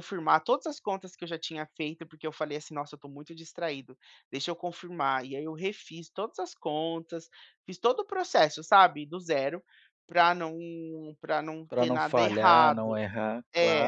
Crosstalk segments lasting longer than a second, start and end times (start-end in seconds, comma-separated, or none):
11.7-13.0